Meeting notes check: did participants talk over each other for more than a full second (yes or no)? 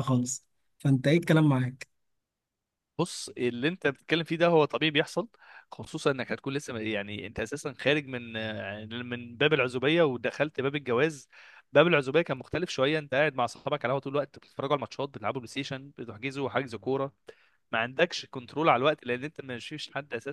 no